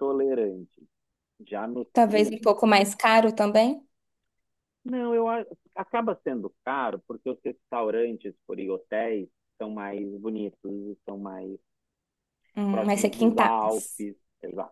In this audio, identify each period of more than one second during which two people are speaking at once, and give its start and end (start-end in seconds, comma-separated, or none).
12.7-14.1